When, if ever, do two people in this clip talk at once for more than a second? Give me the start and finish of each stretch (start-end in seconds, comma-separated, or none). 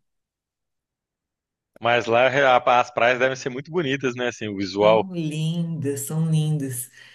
none